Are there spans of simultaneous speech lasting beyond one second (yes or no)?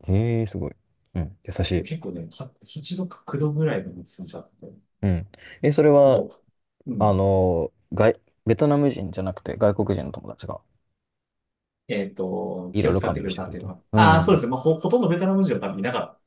yes